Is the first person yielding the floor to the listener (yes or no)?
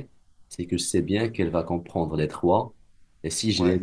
no